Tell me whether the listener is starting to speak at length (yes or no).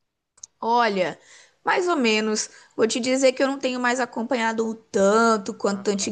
no